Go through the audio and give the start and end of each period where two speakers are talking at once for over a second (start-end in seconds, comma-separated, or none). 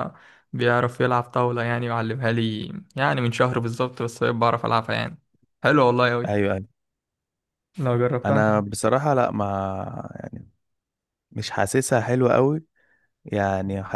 none